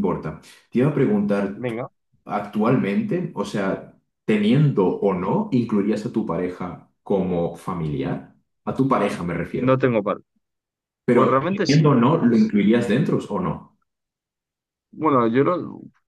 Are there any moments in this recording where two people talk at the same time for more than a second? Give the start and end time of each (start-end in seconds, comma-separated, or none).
11.1-12.5